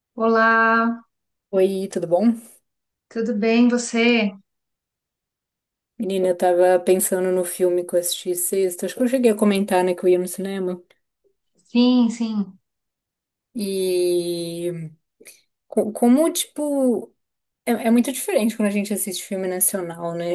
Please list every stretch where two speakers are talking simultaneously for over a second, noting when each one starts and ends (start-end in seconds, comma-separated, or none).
none